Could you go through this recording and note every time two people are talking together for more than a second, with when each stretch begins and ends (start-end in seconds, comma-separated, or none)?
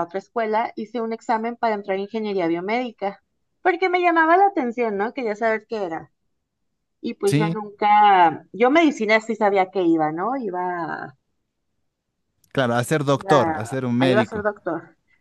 13.1-14.5